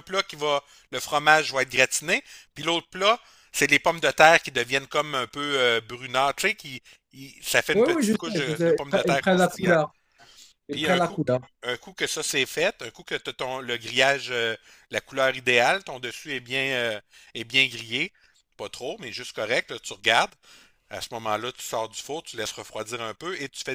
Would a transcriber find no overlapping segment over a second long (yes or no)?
no